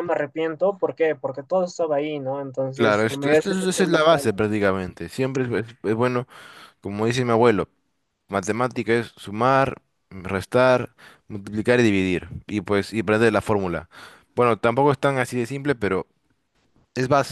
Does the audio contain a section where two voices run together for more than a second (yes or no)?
yes